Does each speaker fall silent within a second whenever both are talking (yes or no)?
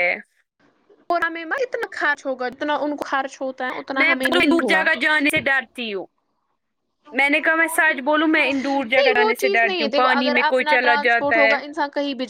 no